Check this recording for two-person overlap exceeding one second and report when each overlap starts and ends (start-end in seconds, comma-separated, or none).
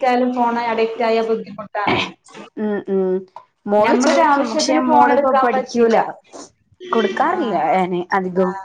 3.9-6.0